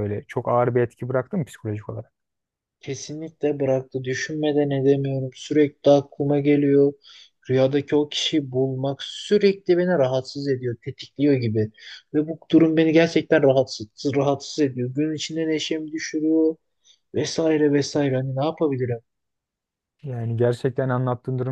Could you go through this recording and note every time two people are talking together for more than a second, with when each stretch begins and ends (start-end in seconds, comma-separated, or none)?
none